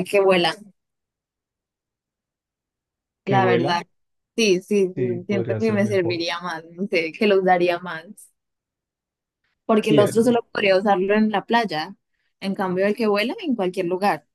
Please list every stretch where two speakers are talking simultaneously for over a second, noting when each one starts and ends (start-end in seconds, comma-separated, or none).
5.0-6.2